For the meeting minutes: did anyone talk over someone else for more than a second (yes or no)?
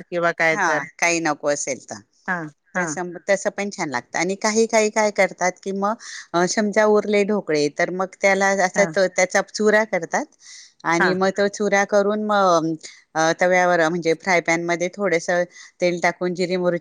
no